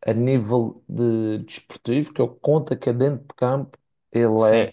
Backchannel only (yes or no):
yes